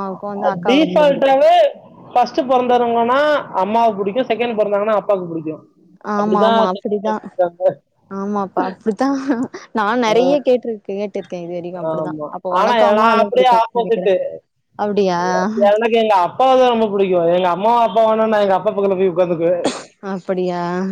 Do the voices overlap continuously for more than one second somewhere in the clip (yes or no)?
yes